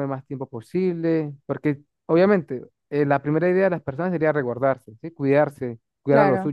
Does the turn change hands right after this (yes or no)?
no